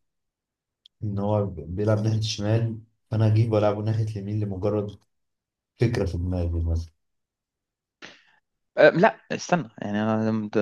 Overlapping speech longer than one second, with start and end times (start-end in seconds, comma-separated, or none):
none